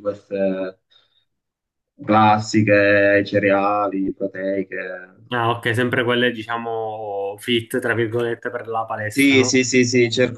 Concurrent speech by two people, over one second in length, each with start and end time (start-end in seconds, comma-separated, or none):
none